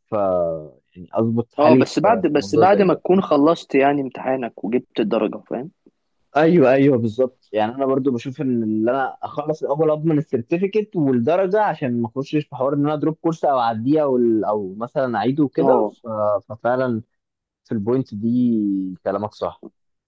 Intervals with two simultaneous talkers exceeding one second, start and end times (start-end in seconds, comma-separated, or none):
1.6-3.0